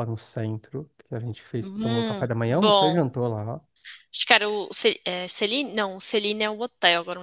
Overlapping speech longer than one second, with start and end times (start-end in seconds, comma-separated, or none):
1.6-3.0